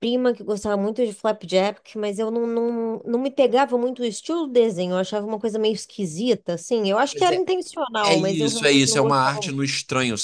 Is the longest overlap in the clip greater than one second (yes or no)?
yes